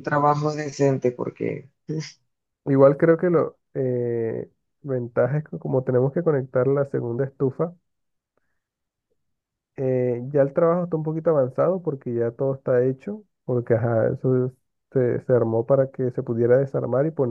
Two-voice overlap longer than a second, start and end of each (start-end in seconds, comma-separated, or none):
none